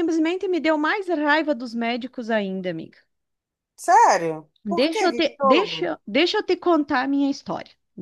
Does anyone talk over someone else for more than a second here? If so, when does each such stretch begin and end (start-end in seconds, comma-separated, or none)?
4.6-5.9